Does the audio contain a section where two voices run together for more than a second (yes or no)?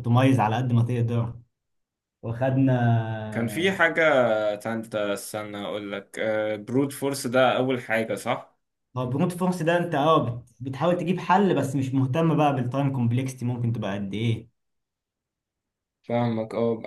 no